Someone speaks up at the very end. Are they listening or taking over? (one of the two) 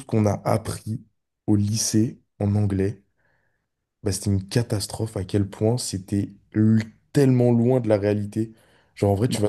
listening